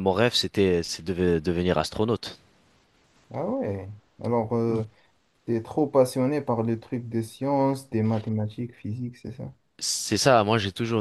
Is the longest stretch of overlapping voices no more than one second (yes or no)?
yes